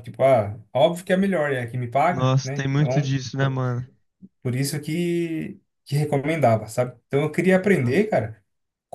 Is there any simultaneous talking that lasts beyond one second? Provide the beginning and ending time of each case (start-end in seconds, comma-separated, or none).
2.1-3.6